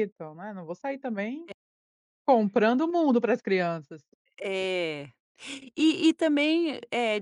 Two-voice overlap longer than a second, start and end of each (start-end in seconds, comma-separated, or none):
none